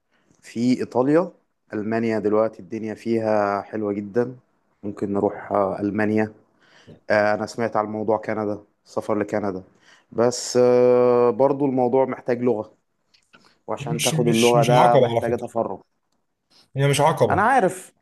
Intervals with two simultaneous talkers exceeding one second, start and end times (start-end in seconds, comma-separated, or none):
13.8-15.5